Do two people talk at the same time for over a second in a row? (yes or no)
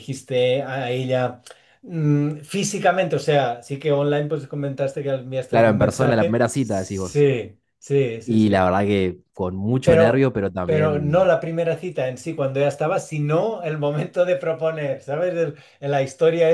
yes